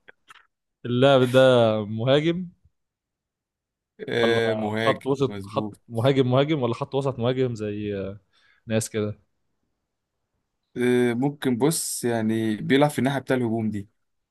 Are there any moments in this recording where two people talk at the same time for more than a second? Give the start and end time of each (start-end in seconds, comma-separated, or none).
4.2-5.8